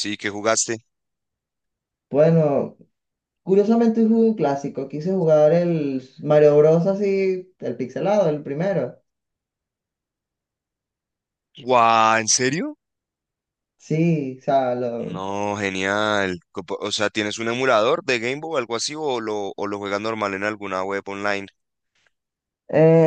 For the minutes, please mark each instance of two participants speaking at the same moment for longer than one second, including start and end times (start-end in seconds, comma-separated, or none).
none